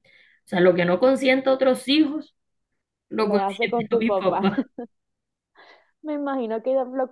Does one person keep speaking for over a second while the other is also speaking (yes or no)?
yes